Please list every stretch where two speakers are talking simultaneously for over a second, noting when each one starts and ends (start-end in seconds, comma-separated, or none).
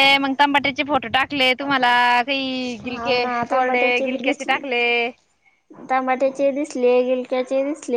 2.9-4.6